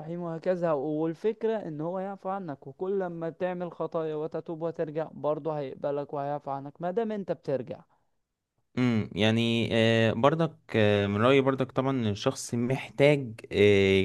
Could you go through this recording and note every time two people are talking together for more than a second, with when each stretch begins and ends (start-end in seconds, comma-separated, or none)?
none